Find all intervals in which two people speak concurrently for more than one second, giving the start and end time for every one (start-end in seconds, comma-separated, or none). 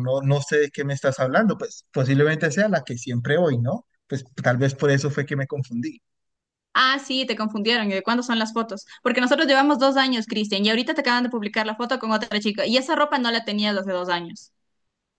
none